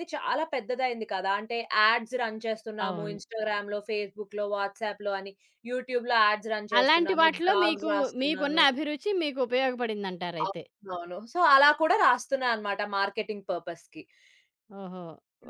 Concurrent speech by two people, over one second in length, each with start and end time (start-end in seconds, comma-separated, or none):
6.8-8.6